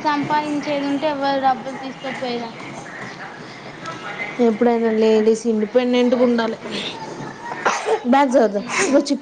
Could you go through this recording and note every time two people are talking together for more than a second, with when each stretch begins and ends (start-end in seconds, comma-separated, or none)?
5.2-6.5